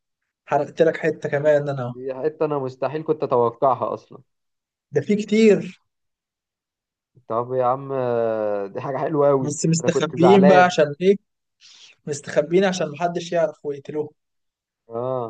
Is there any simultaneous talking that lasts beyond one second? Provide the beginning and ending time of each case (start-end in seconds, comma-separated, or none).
9.4-10.8